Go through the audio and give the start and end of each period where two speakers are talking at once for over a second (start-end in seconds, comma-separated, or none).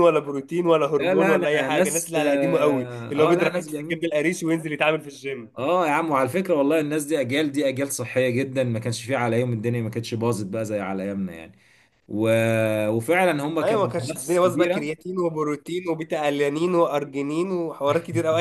1.0-4.1, 13.6-14.9